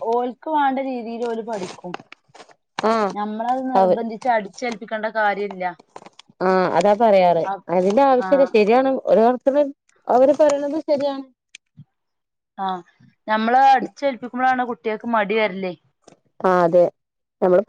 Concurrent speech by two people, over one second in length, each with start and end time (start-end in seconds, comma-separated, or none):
none